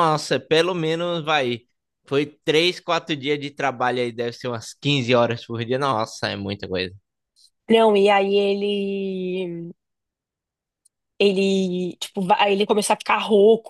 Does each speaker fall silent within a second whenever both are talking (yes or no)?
yes